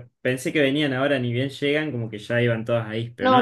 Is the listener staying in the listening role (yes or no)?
no